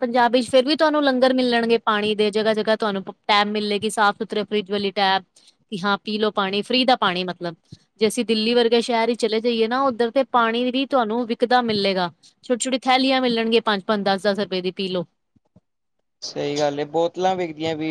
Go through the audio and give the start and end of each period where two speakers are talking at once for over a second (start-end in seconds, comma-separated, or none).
none